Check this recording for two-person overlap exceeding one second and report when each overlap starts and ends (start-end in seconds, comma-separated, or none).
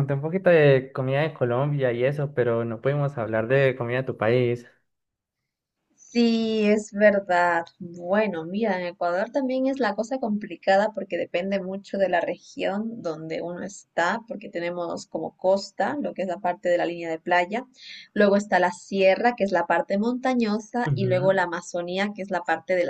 none